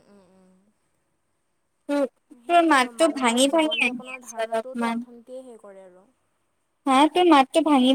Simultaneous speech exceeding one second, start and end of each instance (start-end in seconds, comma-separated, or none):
2.5-5.0